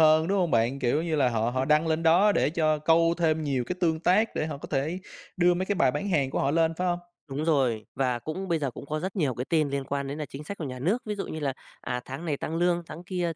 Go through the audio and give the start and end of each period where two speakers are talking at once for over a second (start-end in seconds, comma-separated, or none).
none